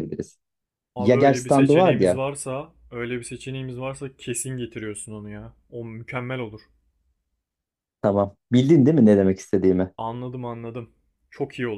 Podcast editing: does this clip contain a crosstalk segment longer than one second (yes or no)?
yes